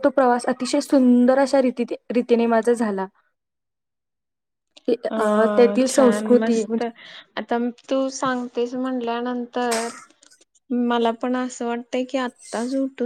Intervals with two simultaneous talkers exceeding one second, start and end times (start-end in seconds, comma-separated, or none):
none